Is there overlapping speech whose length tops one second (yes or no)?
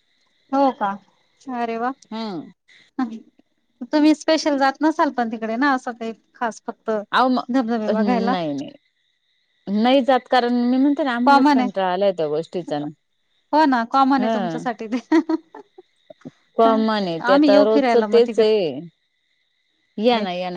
yes